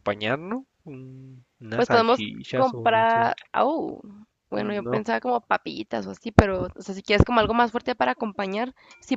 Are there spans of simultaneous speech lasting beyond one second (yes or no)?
yes